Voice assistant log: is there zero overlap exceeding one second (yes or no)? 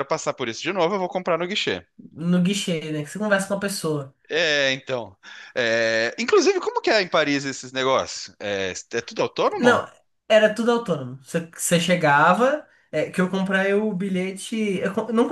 yes